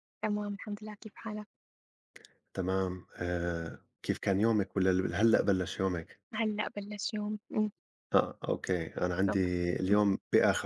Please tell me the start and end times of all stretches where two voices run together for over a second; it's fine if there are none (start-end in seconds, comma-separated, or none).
none